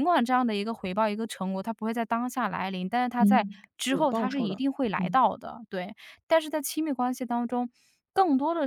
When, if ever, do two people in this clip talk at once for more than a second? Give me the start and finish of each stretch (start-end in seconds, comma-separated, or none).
3.2-5.2